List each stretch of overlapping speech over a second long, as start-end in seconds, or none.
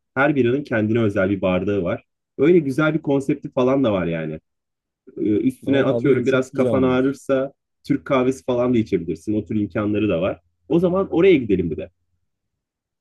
5.7-7.2